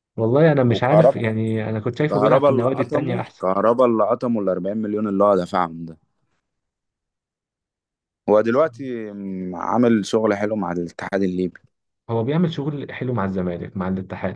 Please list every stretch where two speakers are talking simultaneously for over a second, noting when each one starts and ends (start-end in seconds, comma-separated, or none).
2.1-3.4